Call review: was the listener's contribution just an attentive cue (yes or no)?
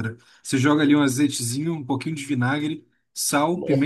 yes